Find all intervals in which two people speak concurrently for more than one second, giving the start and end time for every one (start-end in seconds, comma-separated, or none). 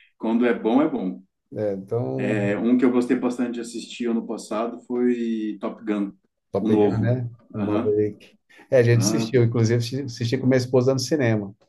6.6-8.0